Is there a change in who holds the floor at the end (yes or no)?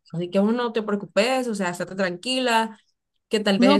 yes